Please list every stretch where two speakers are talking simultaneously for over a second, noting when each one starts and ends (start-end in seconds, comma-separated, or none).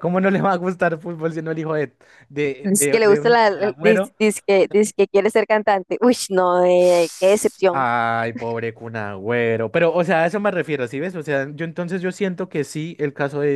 2.6-4.2